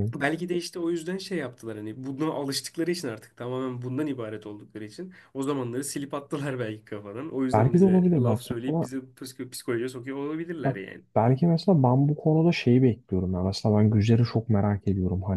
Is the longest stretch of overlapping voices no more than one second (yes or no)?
no